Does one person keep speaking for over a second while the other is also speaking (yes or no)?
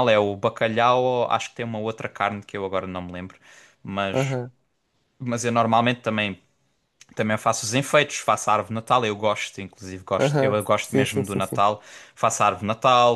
yes